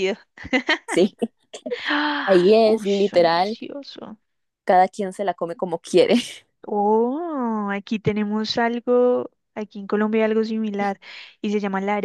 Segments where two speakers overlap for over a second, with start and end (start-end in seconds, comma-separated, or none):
2.3-3.6